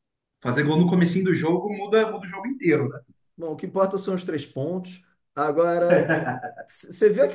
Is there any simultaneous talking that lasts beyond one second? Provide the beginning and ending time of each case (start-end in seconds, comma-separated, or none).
none